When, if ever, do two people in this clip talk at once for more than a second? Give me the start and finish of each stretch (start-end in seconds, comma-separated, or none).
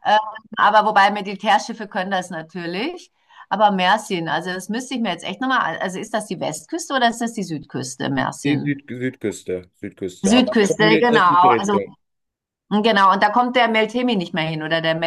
10.2-11.8